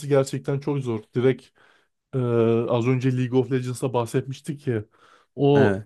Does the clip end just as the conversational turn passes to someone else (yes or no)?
no